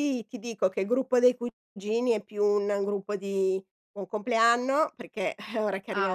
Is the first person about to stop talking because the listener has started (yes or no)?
no